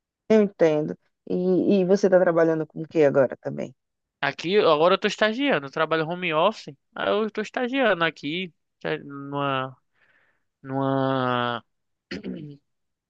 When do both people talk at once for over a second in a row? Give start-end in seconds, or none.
none